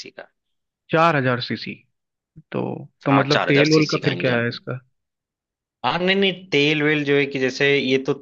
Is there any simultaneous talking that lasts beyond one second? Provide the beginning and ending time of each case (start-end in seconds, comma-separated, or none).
3.1-4.4